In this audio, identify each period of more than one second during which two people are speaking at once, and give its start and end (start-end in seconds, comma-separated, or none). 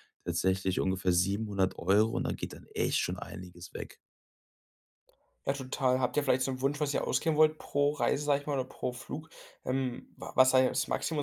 none